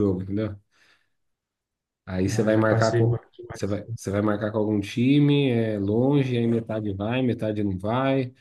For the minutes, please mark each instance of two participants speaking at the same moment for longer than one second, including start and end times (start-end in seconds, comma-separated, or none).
2.3-3.8